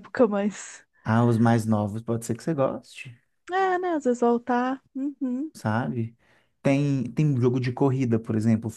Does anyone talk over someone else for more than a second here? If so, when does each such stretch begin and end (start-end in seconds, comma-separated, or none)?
none